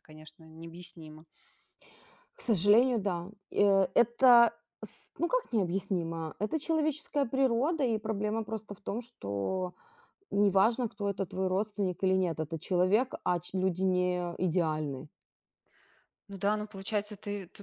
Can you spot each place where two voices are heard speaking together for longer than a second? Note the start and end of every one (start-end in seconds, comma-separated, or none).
none